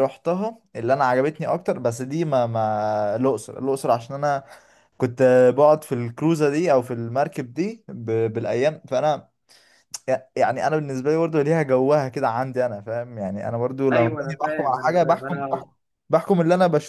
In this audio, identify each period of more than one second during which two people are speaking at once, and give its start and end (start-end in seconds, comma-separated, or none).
13.9-15.6